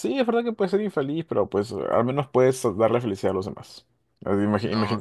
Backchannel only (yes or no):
yes